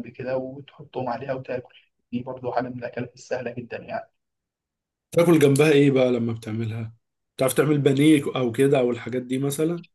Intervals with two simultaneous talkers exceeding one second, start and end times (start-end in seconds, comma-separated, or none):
none